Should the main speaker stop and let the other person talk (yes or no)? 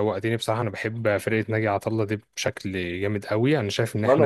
no